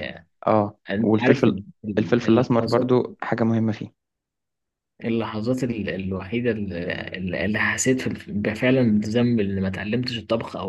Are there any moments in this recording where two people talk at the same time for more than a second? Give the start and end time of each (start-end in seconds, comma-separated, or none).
0.9-2.9